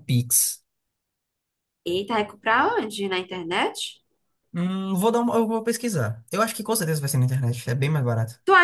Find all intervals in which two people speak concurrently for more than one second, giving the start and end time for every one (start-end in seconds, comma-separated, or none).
none